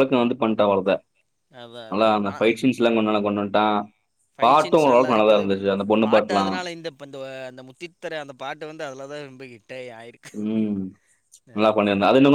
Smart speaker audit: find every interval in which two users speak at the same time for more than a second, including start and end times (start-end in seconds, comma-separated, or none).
none